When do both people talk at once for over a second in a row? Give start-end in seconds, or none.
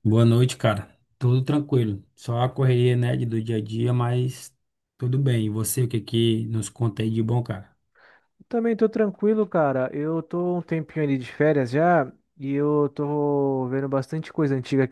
none